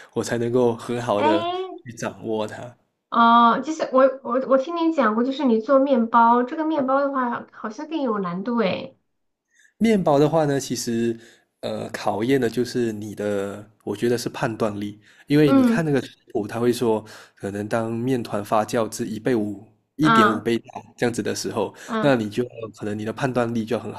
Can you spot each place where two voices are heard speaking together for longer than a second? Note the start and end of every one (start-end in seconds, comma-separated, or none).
none